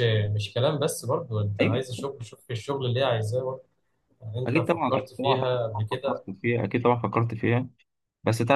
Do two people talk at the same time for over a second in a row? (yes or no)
yes